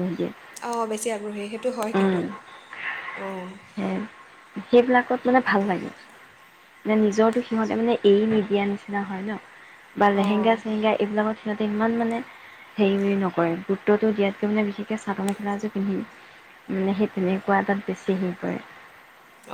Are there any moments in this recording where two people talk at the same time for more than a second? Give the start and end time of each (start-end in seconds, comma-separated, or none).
none